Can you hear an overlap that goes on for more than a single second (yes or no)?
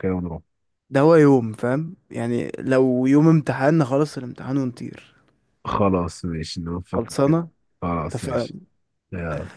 no